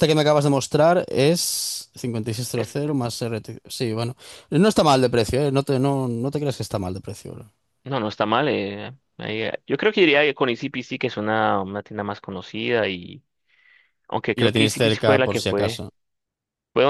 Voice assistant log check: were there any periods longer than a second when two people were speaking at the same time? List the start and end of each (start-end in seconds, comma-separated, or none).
14.4-15.8